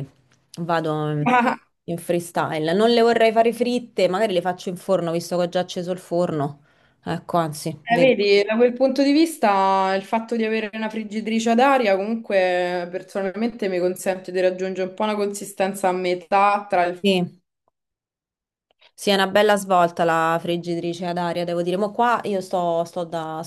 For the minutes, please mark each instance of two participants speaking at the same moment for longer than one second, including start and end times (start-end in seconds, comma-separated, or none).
none